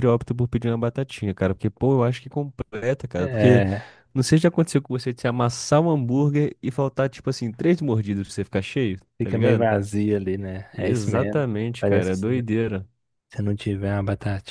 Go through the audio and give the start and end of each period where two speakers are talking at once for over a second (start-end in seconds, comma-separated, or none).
10.8-12.5